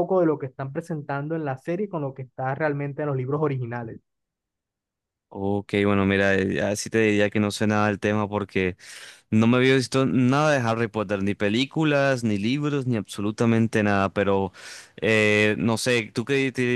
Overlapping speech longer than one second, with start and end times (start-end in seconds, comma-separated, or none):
none